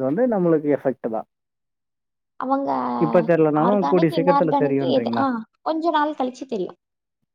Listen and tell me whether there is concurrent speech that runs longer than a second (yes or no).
yes